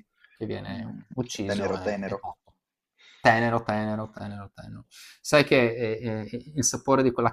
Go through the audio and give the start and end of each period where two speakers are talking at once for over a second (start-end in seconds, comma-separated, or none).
0.7-2.2